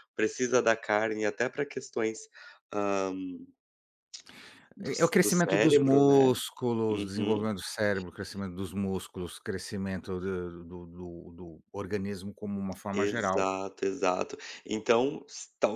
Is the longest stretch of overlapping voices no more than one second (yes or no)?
no